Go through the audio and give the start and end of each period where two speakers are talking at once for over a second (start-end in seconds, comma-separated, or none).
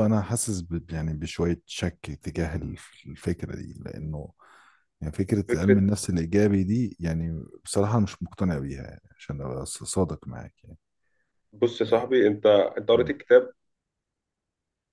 none